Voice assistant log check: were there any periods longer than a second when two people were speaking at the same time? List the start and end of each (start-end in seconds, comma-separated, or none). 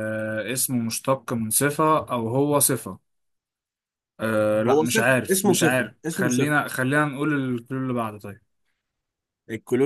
4.7-6.6